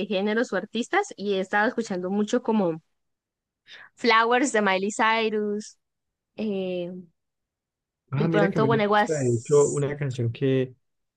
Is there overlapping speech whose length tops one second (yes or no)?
yes